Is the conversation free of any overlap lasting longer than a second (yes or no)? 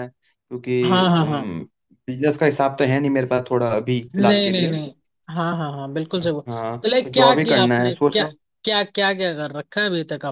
no